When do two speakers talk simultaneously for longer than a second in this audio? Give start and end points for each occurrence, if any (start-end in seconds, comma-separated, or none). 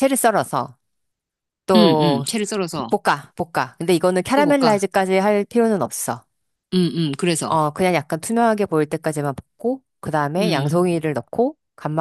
none